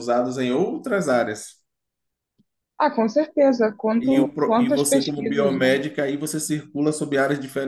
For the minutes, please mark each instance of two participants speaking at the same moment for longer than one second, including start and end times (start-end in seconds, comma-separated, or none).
4.0-5.8